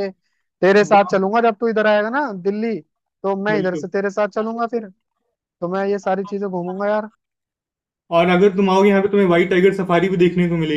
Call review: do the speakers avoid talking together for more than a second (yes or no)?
yes